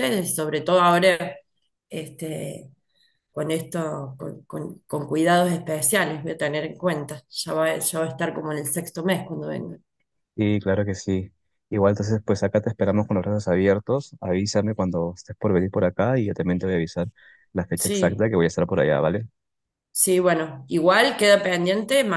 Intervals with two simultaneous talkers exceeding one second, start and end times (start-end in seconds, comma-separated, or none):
none